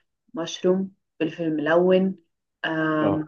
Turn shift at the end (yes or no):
no